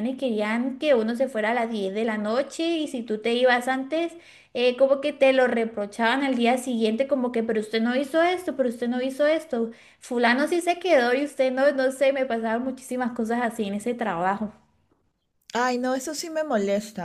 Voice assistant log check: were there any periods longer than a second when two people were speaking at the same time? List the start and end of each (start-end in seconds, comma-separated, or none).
none